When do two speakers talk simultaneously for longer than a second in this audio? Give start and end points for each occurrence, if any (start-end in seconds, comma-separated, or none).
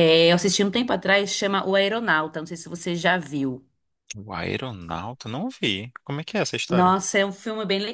none